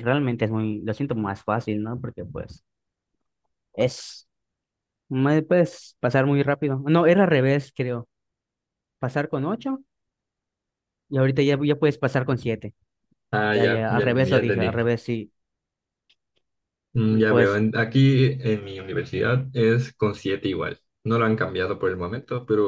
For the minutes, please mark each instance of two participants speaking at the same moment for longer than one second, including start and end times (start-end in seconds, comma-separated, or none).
13.5-14.7